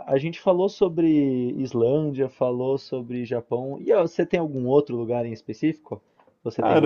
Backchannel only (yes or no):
no